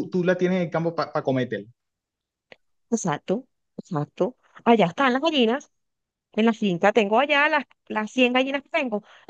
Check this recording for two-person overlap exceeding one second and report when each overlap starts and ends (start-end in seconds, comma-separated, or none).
none